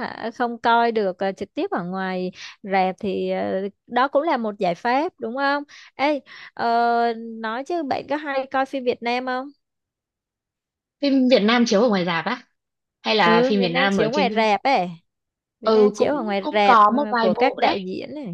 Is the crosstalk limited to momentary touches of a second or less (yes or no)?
no